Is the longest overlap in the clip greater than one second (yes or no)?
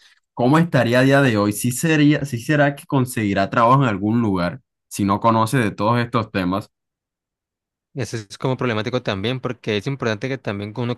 no